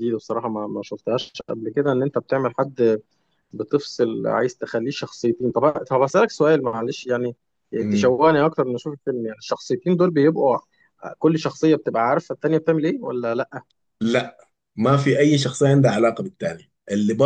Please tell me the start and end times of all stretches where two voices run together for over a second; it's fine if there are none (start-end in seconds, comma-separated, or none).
none